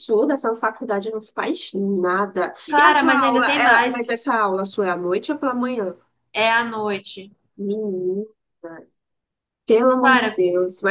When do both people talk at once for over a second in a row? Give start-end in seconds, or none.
2.7-4.2